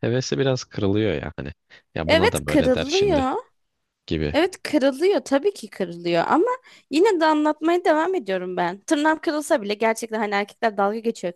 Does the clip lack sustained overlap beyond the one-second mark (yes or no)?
no